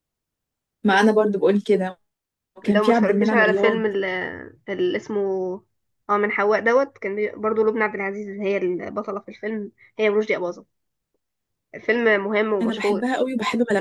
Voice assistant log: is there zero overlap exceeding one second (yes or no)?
no